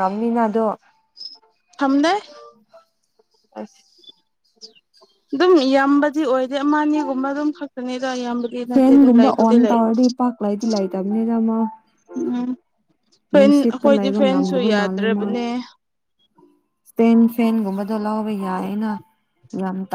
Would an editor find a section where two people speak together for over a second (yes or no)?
yes